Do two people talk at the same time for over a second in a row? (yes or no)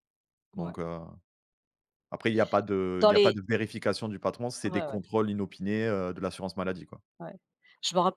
no